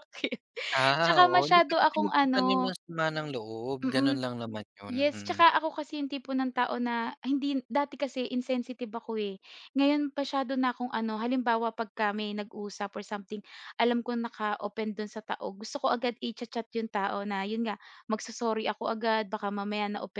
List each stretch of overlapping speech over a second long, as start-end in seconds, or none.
1.0-2.7